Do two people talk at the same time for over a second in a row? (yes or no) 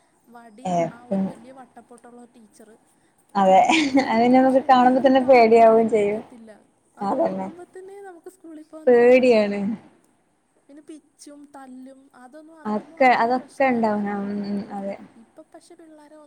yes